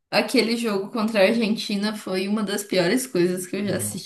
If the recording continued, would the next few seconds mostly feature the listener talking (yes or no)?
no